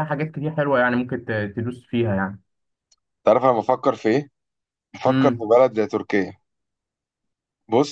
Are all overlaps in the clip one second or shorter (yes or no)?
yes